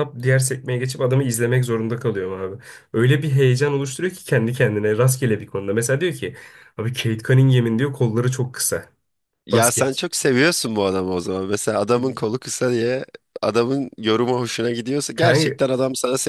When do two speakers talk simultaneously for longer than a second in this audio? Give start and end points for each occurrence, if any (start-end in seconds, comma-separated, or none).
none